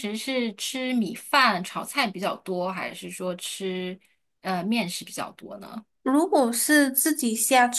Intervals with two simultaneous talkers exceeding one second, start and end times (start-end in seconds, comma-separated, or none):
none